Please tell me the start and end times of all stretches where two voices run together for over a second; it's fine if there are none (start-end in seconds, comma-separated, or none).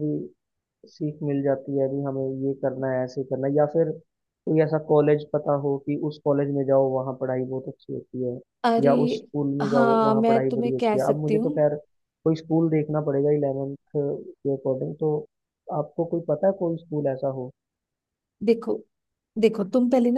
9.7-11.6